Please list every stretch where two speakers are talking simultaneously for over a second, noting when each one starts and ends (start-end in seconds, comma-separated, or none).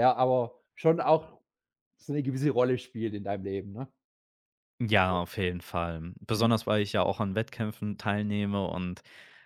none